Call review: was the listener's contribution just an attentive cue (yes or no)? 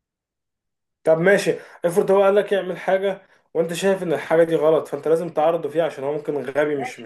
no